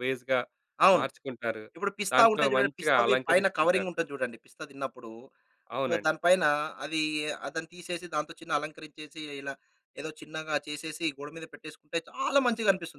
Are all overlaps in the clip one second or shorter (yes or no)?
no